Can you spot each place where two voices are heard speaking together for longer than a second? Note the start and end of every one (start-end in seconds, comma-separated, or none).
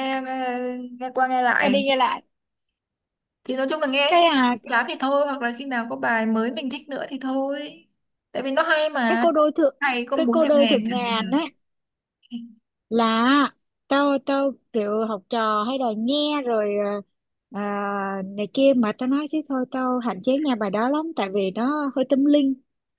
10.1-11.4